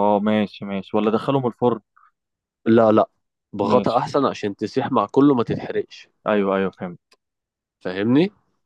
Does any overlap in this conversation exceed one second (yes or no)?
no